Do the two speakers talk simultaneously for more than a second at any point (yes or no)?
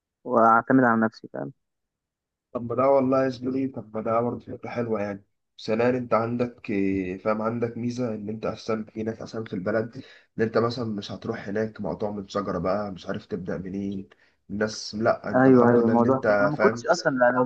yes